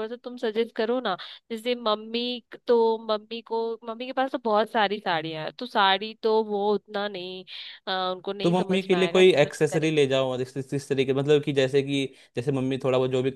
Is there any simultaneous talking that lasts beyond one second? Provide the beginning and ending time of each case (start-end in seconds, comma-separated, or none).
8.4-9.9